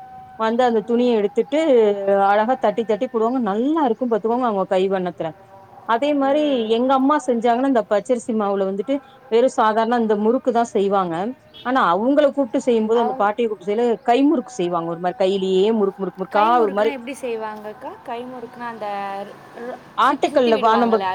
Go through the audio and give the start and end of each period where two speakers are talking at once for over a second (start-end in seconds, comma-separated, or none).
none